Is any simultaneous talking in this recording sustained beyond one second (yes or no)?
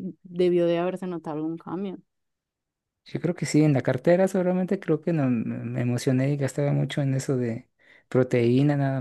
no